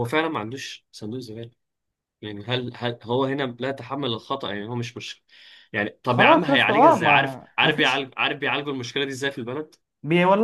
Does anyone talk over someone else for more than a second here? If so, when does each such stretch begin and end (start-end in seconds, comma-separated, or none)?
6.0-8.1